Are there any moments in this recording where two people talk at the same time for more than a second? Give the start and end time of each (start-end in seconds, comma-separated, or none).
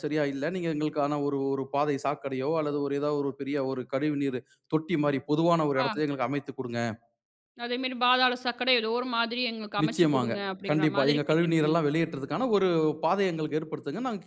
9.8-11.8